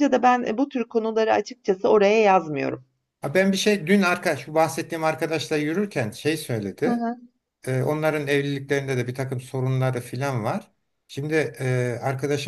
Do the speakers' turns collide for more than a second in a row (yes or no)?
no